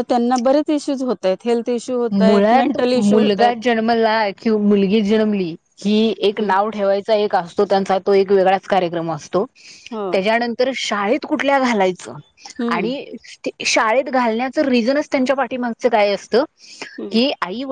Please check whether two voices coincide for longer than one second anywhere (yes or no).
yes